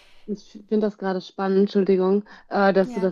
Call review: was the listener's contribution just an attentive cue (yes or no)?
yes